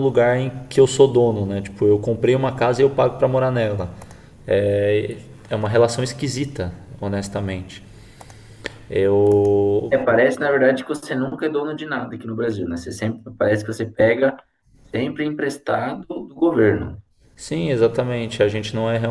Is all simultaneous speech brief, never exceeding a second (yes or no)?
yes